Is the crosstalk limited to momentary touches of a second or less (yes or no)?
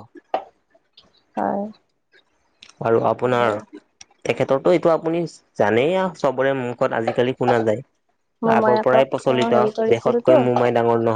no